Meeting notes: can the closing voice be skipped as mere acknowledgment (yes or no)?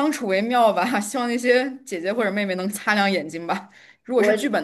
yes